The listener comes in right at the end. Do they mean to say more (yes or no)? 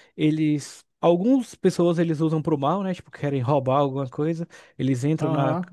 no